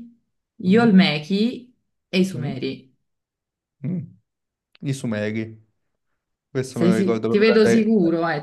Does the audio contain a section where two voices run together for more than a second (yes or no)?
yes